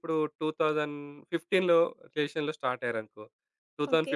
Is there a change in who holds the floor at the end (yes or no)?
no